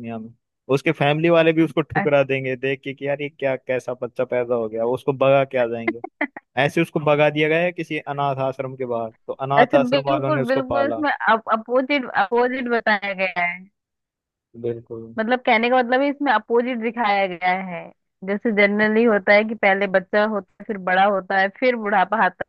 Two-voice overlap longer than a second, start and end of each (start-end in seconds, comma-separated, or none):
9.6-11.0